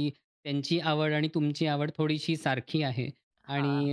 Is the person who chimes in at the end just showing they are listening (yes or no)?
yes